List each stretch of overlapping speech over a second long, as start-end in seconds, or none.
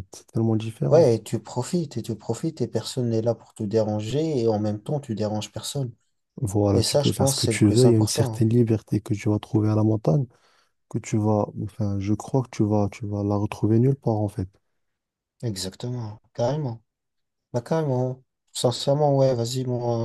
6.7-8.4